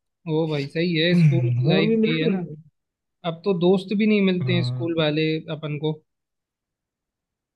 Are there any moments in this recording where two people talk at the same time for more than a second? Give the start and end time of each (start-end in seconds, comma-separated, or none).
1.1-2.4